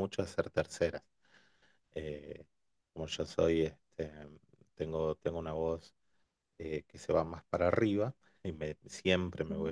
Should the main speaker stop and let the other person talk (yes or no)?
no